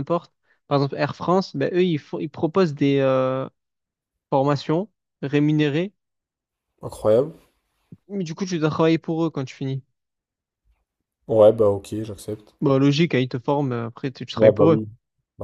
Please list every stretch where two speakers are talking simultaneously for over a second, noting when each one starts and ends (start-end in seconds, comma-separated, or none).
none